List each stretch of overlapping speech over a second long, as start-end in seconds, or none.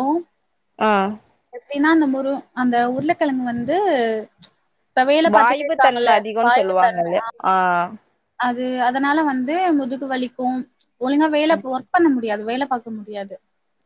5.3-7.0